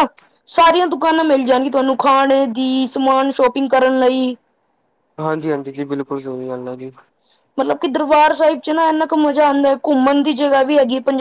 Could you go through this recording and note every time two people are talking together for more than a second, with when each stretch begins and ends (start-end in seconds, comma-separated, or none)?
none